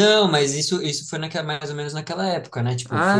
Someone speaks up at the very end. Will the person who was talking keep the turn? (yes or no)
no